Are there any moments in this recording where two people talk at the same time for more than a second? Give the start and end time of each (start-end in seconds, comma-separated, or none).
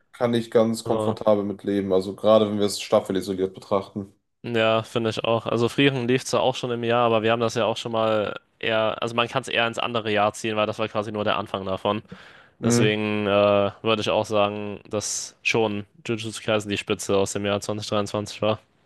none